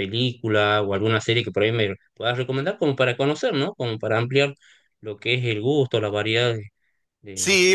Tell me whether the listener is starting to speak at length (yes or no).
yes